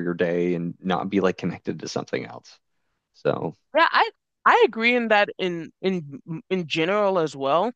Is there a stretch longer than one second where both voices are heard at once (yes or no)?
no